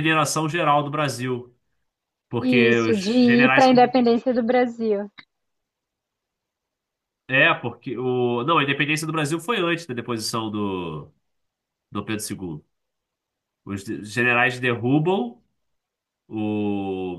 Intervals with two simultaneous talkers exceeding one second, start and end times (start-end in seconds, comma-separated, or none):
2.4-3.9